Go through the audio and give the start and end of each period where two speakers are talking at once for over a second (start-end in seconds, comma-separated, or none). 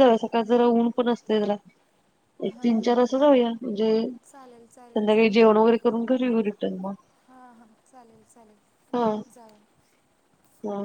4.3-5.6